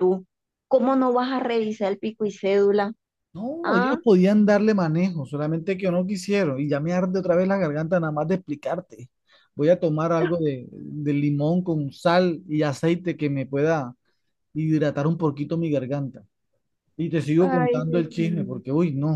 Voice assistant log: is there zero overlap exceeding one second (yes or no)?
no